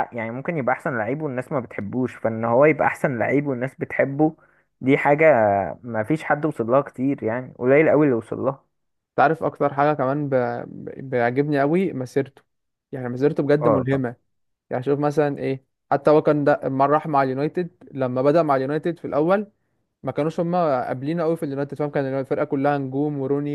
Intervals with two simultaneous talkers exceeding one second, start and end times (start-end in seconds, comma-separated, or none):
none